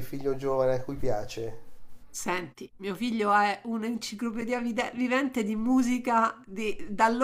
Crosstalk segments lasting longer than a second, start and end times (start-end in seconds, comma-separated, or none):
none